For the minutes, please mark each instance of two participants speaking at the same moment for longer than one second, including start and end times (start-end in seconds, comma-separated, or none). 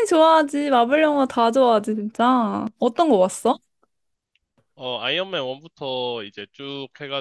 none